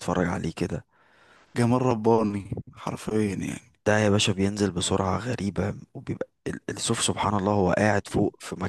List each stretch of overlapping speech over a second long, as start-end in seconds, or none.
none